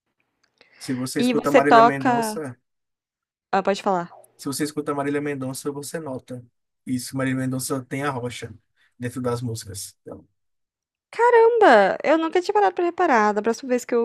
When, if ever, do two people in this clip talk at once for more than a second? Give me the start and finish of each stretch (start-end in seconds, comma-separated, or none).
1.2-2.4